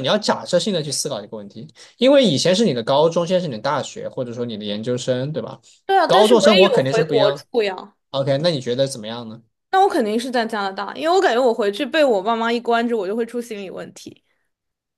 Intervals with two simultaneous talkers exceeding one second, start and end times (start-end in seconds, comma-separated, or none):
6.0-7.4